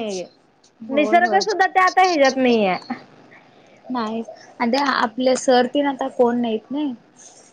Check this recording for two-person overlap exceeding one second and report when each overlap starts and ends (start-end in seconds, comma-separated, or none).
none